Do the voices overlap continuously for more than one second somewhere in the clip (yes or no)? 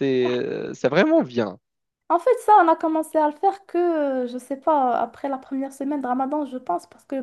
no